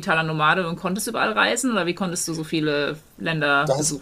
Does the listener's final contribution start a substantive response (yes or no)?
yes